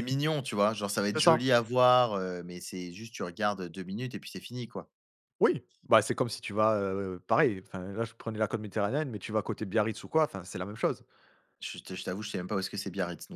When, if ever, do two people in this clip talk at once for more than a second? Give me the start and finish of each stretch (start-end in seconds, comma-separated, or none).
none